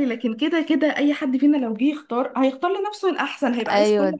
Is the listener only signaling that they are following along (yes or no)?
no